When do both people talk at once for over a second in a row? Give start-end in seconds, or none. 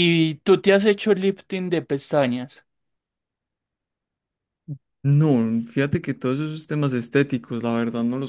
none